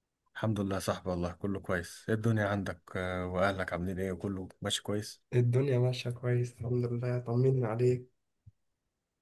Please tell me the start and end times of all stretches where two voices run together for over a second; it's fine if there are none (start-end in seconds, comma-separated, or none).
none